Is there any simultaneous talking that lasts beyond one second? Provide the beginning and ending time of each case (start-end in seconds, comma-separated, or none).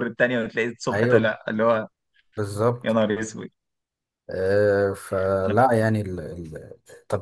none